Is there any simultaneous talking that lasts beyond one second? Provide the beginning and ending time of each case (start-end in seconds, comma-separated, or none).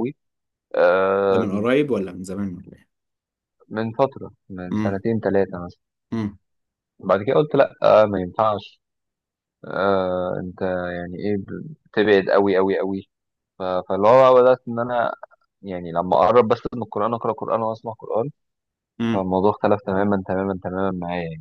none